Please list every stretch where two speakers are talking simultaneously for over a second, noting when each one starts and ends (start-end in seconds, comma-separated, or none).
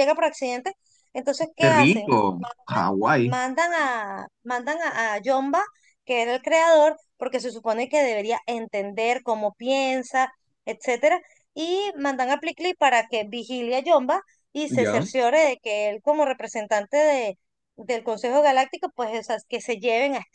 none